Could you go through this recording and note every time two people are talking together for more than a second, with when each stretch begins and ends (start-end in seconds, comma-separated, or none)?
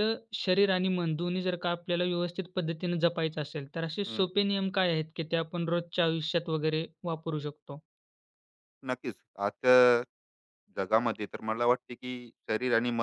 none